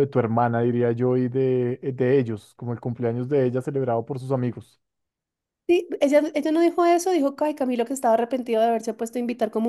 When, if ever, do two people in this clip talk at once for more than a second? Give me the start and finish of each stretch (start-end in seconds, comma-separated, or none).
none